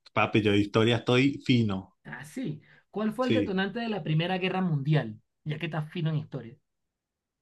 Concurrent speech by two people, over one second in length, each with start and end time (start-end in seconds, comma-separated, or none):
none